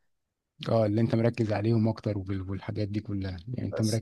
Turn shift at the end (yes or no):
no